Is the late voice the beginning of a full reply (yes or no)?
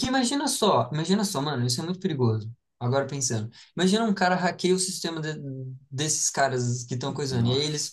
no